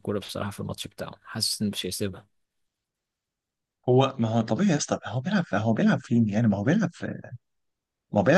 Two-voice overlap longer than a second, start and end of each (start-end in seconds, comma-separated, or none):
none